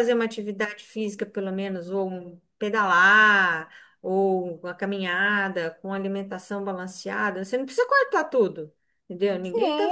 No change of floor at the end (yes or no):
no